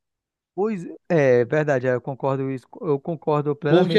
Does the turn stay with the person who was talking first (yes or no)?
no